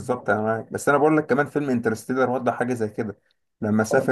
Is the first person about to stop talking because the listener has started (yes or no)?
yes